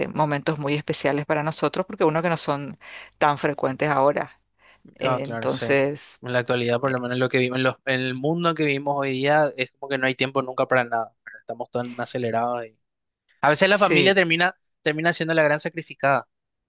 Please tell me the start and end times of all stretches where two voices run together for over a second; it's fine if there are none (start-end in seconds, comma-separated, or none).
5.0-6.2